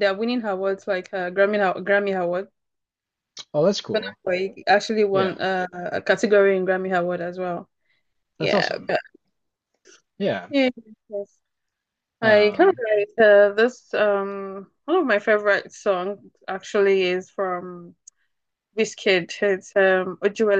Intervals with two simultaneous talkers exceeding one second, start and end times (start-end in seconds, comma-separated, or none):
none